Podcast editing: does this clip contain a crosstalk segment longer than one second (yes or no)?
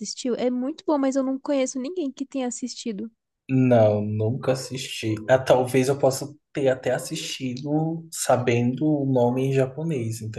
no